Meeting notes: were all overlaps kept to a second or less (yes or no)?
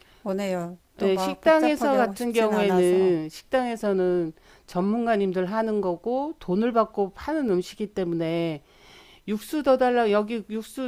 no